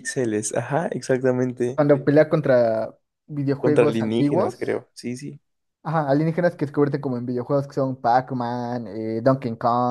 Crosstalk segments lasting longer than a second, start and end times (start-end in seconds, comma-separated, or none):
3.6-4.8